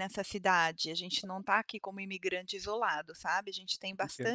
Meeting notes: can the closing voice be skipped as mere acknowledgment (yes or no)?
no